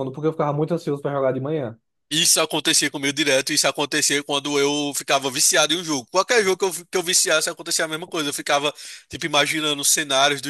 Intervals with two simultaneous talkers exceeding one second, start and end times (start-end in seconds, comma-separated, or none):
none